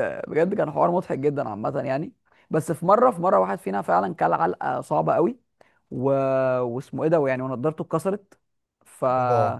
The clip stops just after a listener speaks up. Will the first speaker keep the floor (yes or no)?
yes